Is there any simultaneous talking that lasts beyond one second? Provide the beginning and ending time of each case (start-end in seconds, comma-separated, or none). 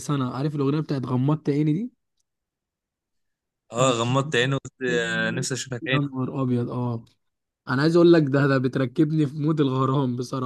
none